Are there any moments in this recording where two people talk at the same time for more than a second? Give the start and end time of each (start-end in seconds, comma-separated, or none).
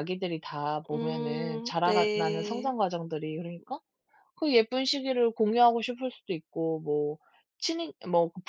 0.9-2.7